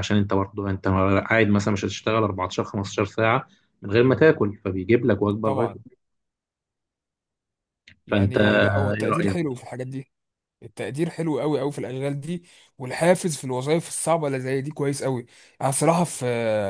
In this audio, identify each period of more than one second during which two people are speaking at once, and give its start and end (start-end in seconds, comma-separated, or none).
8.1-9.5